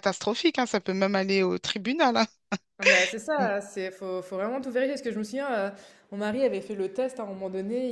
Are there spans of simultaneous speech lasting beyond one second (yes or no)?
no